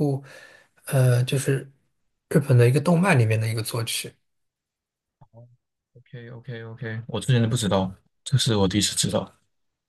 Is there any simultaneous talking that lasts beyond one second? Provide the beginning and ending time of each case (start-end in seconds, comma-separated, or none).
none